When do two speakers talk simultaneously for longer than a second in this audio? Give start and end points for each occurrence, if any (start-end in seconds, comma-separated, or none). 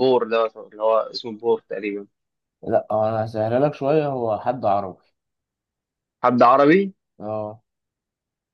none